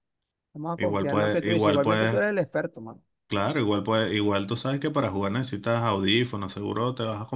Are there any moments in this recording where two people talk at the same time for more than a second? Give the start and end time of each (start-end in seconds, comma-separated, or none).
0.8-2.3